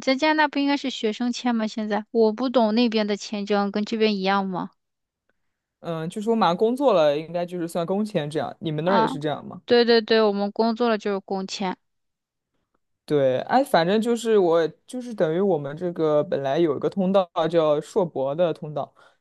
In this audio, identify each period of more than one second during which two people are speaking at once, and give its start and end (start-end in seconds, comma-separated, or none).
none